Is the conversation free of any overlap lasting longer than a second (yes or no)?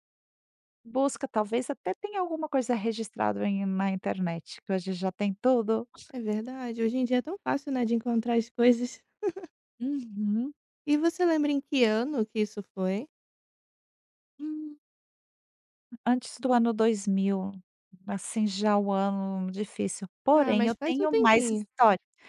no